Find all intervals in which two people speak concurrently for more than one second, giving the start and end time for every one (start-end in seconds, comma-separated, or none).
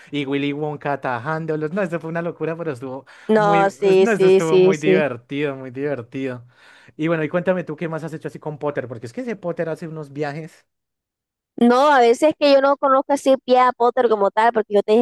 3.3-5.0